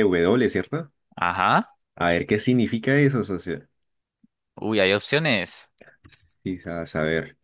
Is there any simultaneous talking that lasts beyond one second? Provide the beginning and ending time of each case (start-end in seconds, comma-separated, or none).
none